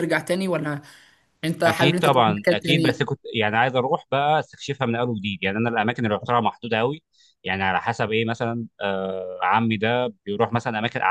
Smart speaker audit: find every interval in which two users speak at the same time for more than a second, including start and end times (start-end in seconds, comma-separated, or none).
1.7-3.0